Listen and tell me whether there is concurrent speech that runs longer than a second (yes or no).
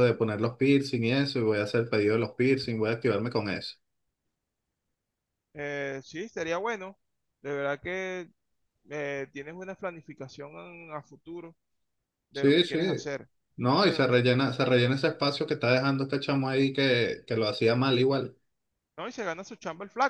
no